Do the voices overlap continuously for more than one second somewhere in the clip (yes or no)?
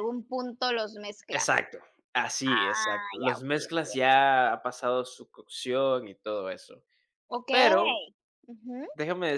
yes